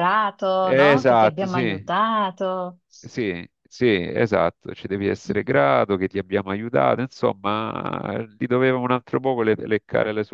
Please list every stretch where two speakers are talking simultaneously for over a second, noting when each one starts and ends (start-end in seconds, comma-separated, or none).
0.6-1.9